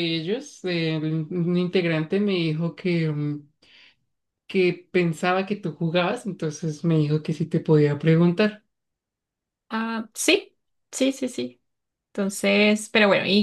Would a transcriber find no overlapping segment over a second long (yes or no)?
yes